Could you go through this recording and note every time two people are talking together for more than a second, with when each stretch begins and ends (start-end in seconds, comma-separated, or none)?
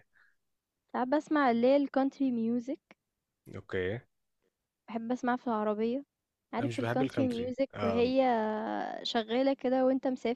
6.6-8.1